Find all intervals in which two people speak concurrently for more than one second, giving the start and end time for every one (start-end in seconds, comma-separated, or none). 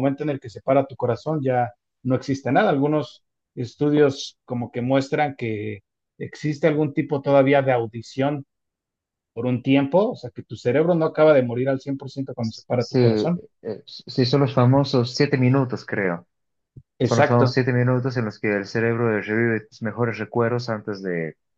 none